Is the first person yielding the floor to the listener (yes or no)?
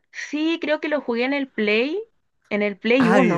yes